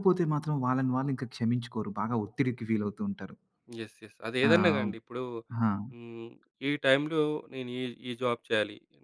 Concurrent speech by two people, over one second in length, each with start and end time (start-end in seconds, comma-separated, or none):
none